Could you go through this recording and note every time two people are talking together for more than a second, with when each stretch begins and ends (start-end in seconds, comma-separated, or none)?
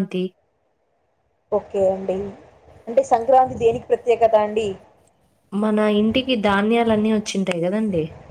none